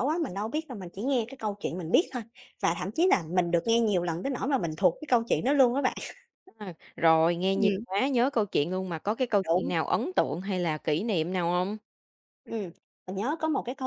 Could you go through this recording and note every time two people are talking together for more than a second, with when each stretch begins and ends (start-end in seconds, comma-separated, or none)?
none